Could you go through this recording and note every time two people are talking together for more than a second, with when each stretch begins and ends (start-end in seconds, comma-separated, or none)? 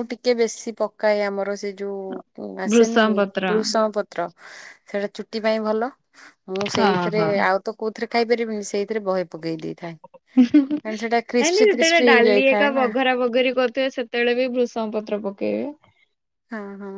10.8-12.8